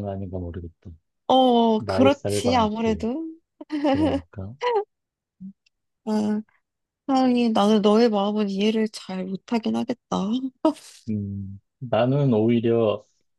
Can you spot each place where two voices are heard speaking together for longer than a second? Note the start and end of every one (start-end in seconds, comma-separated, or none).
1.8-3.0